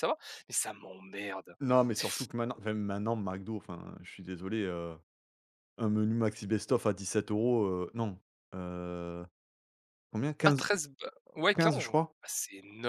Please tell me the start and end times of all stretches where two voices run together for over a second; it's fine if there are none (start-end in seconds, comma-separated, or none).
none